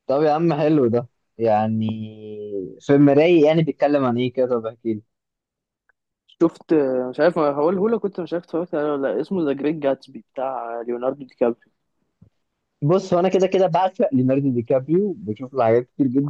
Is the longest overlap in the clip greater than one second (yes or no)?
no